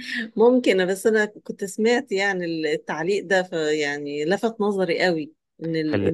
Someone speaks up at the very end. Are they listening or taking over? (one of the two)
listening